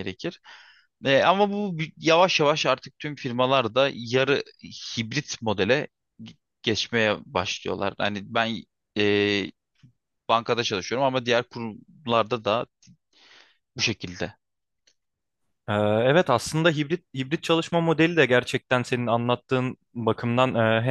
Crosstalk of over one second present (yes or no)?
no